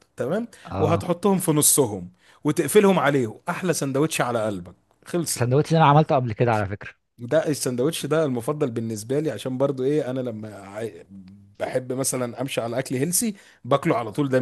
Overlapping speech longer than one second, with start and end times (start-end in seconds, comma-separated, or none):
none